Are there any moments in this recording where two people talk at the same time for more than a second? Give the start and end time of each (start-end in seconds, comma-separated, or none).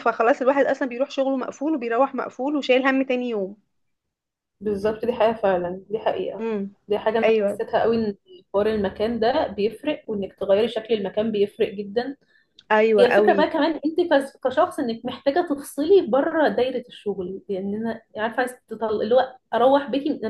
none